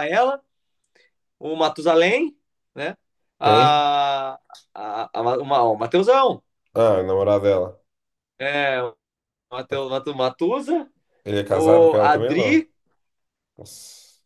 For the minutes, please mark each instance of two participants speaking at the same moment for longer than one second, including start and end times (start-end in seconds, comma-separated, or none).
11.4-12.7